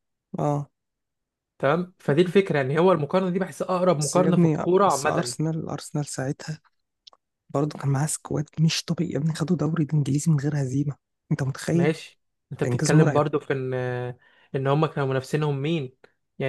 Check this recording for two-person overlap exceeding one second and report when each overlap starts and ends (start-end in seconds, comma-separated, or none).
4.0-5.3